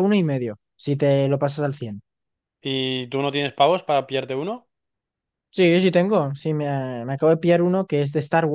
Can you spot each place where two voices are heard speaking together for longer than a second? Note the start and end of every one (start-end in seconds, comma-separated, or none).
none